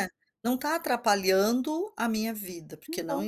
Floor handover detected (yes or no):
no